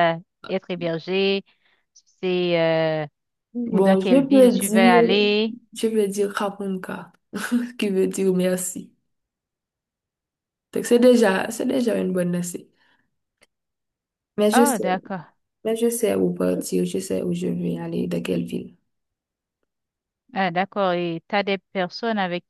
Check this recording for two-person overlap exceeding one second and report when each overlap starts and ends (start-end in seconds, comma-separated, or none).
3.6-5.0